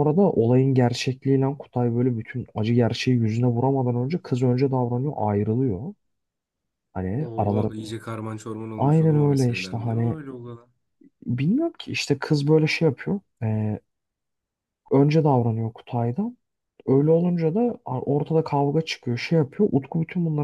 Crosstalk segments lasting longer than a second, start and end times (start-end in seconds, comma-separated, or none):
8.8-10.2